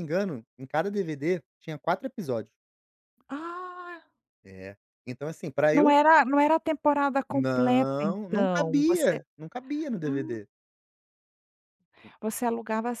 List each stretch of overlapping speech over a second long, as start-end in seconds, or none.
7.3-9.2